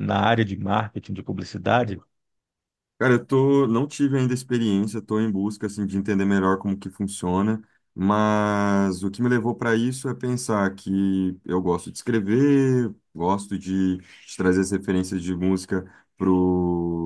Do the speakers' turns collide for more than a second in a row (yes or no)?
no